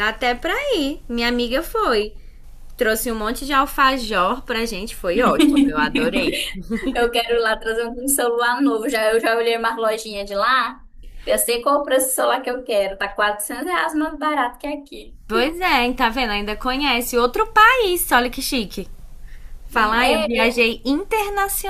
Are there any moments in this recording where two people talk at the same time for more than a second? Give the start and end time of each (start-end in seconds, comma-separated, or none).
none